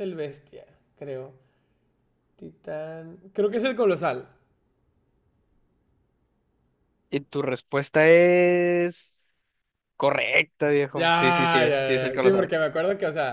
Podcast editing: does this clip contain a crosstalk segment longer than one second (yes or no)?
yes